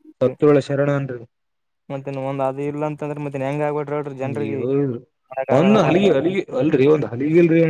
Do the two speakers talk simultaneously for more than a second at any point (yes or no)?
no